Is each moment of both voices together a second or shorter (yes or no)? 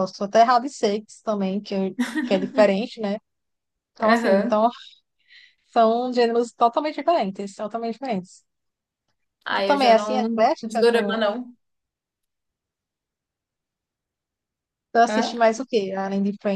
no